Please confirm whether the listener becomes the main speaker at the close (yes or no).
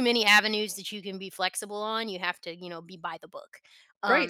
yes